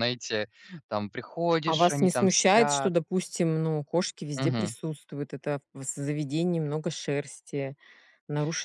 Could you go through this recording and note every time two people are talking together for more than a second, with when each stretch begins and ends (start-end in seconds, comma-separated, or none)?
1.7-2.9